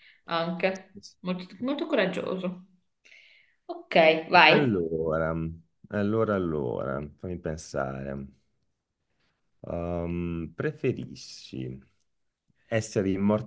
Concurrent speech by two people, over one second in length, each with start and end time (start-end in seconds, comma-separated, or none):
none